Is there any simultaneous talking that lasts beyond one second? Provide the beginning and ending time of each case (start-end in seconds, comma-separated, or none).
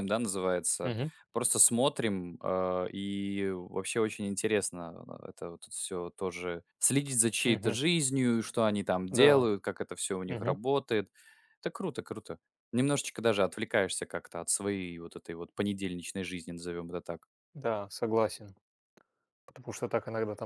none